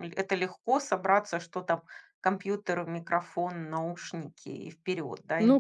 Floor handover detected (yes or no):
yes